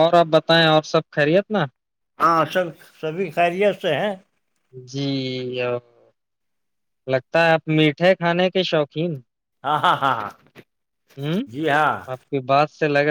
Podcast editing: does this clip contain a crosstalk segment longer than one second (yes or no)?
no